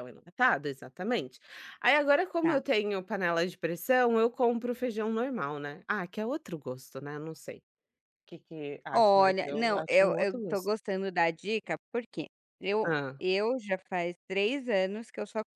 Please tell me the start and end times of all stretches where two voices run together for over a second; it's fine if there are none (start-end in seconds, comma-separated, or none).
8.9-10.7